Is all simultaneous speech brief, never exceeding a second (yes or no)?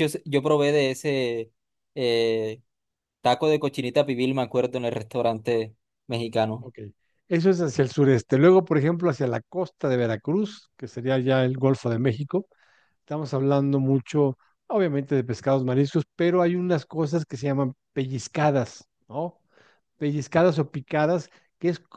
yes